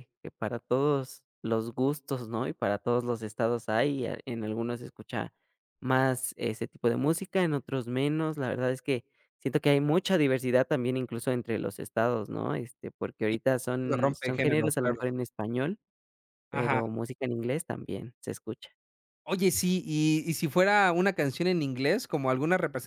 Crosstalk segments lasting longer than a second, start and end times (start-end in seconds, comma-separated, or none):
13.8-15.0